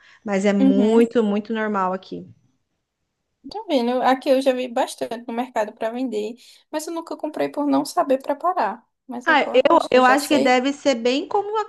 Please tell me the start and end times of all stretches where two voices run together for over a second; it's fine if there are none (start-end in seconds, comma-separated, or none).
9.2-10.6